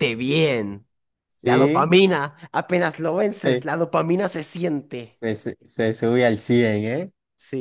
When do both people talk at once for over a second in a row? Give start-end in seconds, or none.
none